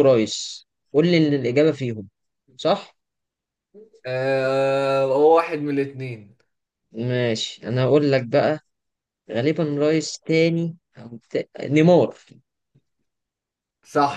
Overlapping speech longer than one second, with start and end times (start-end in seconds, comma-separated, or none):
none